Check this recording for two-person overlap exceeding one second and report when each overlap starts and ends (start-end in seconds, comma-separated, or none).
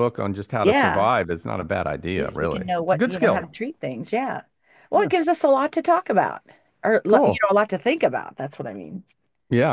2.1-3.5